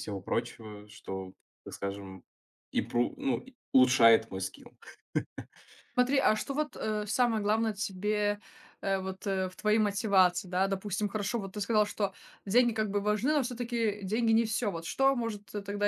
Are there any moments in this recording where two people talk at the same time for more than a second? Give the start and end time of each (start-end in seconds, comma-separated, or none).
none